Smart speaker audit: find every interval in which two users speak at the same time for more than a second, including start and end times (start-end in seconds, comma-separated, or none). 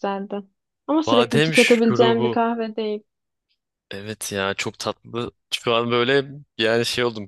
1.1-2.4